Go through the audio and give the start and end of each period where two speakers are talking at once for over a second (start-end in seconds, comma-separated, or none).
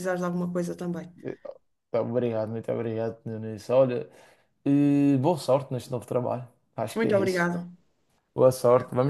none